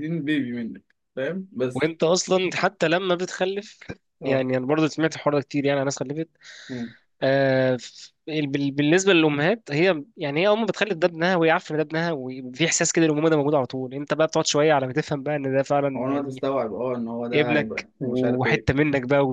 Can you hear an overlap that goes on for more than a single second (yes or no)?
yes